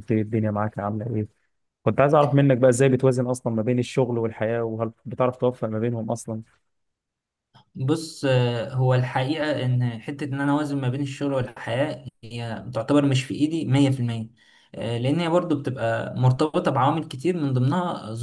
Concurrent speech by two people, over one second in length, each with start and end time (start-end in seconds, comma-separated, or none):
none